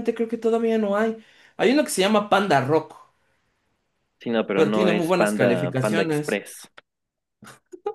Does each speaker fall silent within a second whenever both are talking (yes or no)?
no